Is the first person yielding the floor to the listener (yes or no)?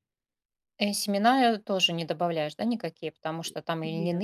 no